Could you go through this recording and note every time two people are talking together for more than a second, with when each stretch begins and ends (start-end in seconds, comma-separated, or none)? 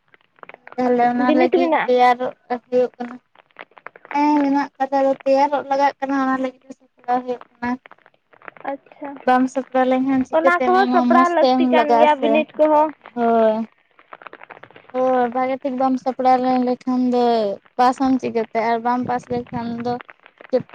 10.3-12.4